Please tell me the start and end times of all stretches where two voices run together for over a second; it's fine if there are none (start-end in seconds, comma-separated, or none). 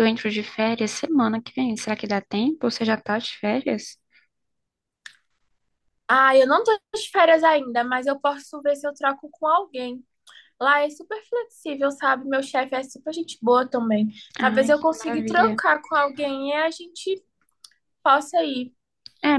14.4-15.6